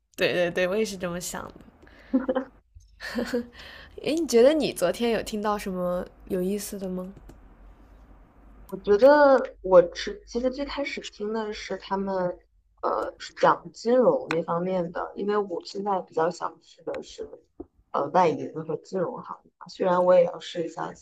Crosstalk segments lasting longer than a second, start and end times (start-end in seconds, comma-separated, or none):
none